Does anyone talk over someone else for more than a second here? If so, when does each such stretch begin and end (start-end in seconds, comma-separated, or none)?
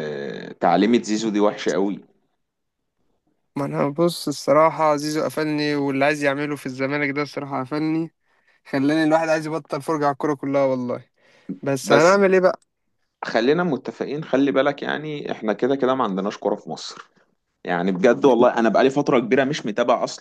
none